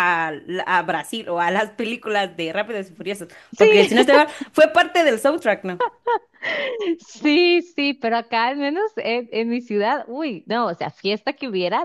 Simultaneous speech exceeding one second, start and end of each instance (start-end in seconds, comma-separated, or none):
none